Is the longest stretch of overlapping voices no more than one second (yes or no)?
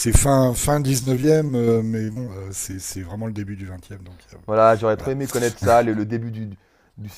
yes